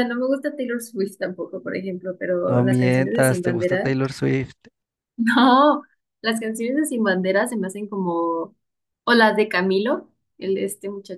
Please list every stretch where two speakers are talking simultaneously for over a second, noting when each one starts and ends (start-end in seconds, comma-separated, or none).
2.5-3.9